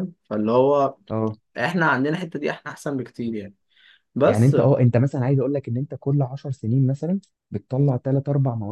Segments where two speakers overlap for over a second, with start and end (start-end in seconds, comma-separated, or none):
none